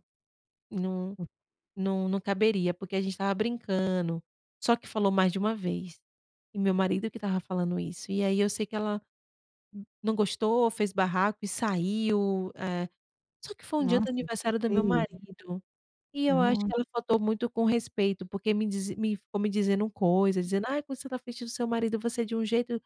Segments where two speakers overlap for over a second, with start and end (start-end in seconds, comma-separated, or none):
13.8-15.0